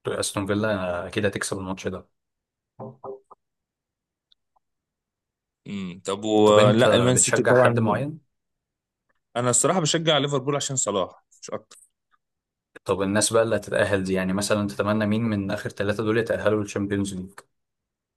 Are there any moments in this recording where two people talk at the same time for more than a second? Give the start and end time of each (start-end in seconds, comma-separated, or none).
6.5-7.8